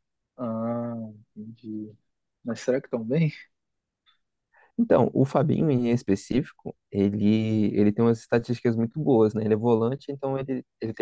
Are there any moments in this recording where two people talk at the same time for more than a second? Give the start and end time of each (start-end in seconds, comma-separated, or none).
none